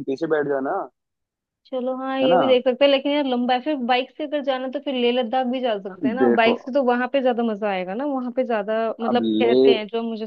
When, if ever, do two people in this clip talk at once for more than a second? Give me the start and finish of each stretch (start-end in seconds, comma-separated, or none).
none